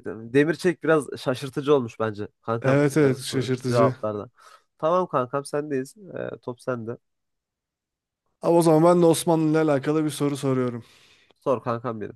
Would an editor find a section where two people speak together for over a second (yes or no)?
yes